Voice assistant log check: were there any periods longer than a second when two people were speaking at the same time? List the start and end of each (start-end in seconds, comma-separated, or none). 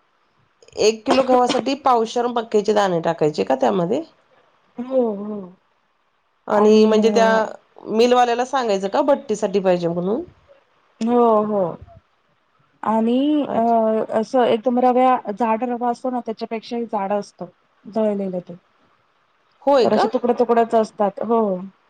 none